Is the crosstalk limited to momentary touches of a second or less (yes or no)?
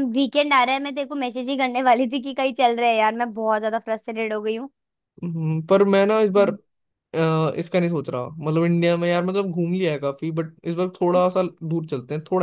yes